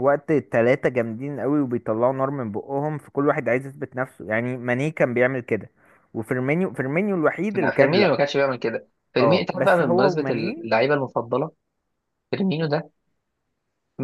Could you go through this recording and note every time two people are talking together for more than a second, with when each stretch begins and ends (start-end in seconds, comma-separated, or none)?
9.2-10.7